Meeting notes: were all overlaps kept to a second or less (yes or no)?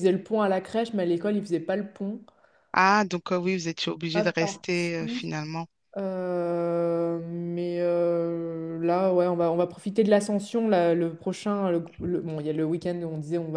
no